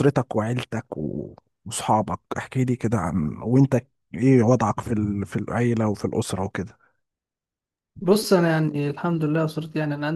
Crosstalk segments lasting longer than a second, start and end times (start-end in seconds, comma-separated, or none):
none